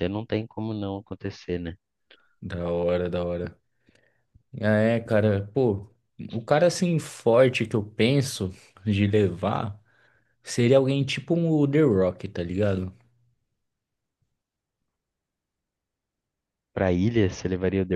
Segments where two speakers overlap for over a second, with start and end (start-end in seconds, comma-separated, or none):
none